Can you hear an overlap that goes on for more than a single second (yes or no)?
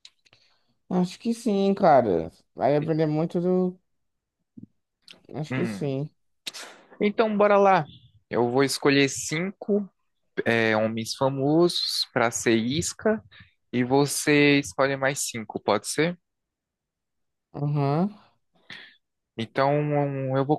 no